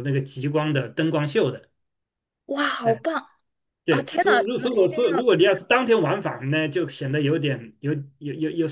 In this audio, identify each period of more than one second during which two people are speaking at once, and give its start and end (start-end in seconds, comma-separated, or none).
3.9-5.3